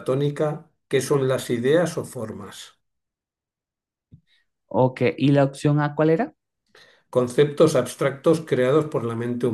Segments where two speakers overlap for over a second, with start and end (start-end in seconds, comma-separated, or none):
none